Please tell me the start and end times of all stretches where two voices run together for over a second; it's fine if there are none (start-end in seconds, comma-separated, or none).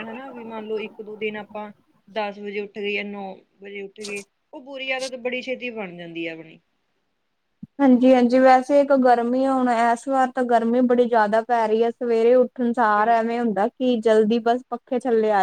none